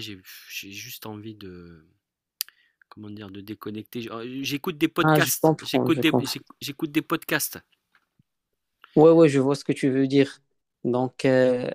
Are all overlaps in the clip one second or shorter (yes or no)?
no